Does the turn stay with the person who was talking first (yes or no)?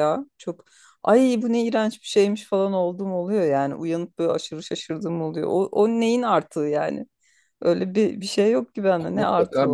no